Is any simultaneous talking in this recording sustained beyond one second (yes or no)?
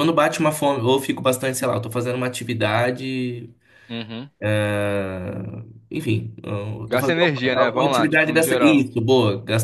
yes